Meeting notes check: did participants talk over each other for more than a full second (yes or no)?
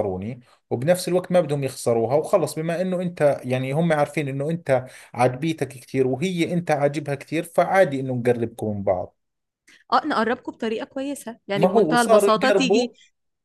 yes